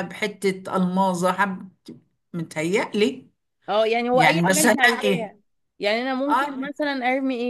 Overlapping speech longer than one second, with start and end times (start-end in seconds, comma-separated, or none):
4.1-5.3